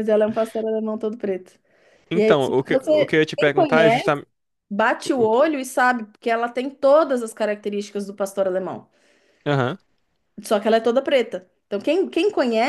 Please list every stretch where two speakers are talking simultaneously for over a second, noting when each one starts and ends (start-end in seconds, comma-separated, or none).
2.1-4.2